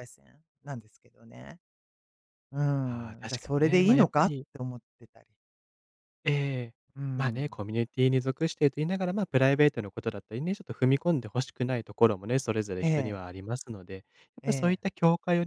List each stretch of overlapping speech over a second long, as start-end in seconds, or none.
2.8-4.5